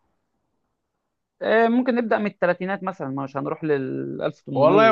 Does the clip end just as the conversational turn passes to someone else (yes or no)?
yes